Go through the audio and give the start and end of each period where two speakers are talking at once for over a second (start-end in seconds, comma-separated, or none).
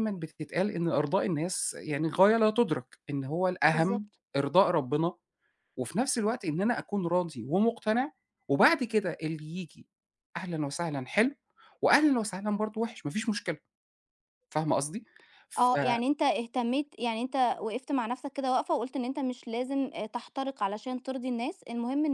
none